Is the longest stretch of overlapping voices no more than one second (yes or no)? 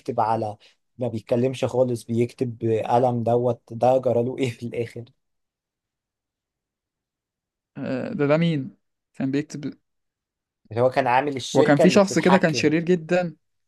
no